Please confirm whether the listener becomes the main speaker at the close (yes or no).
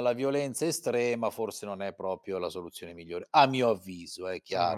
yes